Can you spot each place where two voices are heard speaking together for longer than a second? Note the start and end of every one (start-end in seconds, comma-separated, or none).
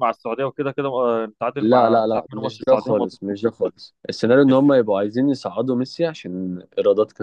1.6-3.2